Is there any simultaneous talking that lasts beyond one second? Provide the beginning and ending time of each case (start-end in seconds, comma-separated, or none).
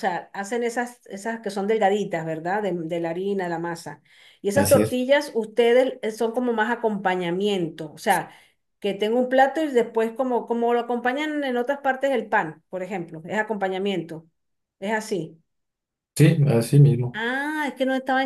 none